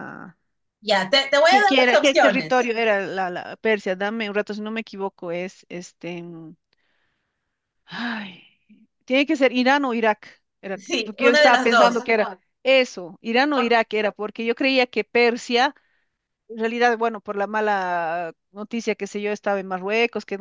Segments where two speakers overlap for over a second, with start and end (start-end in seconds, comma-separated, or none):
1.5-2.7, 10.8-12.1